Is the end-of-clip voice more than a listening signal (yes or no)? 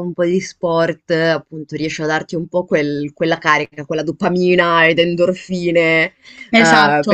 no